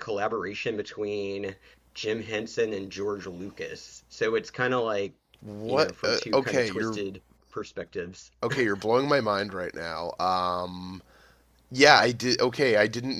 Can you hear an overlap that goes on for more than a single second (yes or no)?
yes